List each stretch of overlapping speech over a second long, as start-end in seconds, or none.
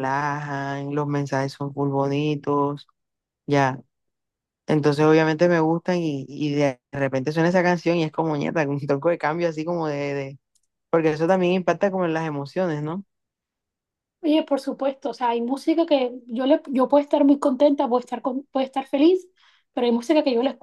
none